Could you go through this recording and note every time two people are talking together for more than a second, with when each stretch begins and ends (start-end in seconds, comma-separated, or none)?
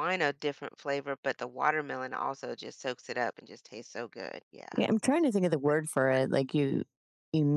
none